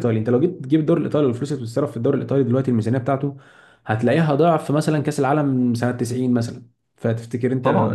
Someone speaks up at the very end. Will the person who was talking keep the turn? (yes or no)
no